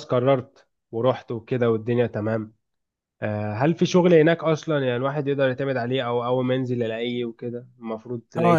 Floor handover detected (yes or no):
yes